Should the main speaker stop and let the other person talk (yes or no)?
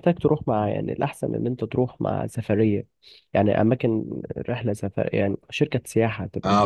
yes